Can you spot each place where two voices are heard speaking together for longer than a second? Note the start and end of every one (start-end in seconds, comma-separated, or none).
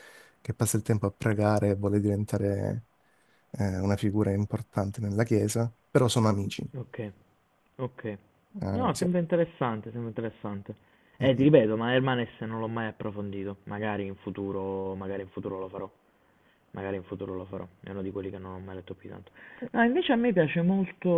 none